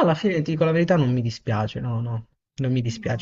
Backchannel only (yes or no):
yes